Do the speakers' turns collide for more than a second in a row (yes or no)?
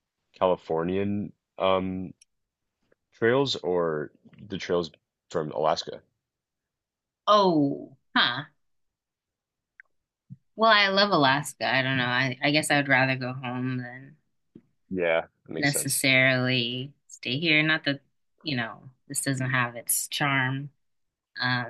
no